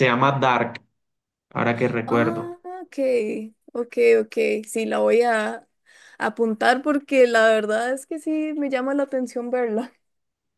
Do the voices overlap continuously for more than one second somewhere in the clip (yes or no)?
no